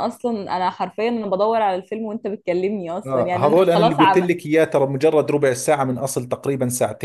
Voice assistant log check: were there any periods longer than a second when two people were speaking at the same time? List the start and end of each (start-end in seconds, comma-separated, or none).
3.0-4.3